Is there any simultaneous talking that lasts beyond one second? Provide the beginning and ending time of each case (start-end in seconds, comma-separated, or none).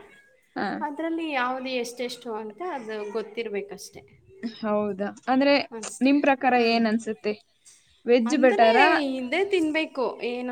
none